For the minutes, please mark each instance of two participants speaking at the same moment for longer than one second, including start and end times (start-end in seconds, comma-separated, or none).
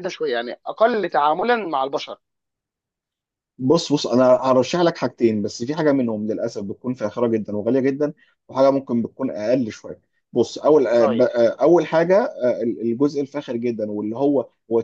none